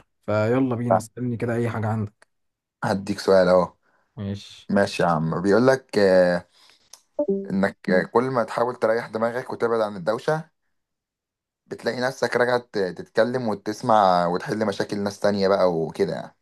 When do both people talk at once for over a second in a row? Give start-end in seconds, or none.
none